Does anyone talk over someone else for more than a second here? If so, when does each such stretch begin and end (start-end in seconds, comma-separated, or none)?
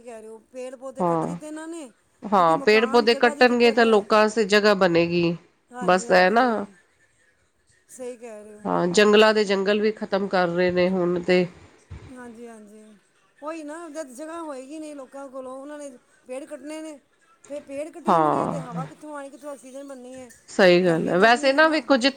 2.4-4.0